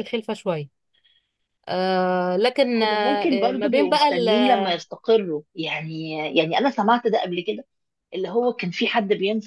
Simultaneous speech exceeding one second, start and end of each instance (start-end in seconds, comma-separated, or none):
2.8-4.3